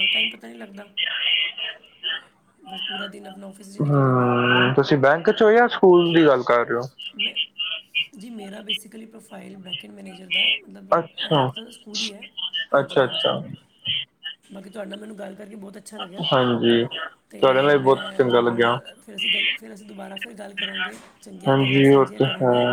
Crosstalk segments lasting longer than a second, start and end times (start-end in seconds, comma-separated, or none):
17.4-18.7